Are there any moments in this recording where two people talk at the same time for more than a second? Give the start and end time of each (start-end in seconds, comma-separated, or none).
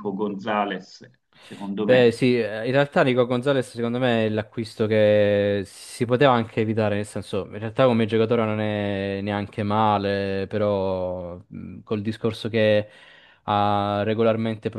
none